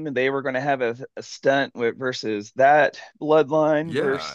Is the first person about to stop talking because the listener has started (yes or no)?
yes